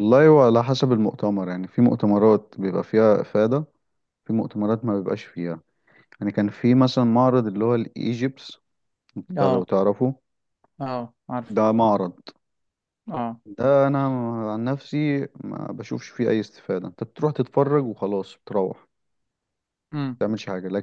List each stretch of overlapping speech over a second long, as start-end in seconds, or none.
none